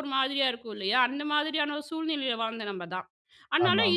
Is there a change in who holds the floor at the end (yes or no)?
no